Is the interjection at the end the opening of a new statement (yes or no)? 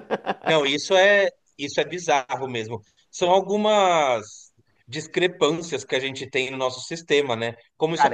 no